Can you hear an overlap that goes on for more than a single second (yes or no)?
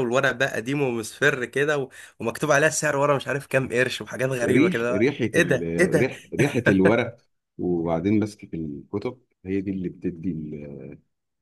yes